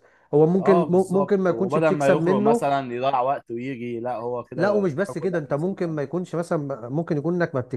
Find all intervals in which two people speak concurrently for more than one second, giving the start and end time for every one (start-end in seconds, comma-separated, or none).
0.6-2.7, 4.5-6.0